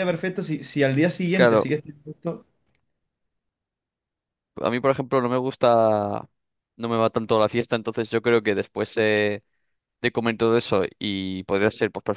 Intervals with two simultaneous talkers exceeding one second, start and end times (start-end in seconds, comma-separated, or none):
none